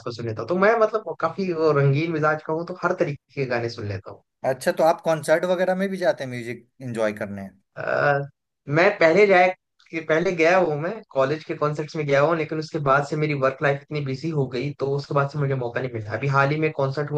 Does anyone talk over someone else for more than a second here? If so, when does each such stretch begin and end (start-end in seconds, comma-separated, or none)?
none